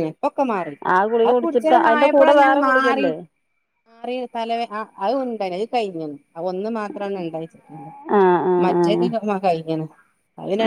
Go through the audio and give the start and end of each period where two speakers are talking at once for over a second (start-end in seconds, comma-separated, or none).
1.2-3.1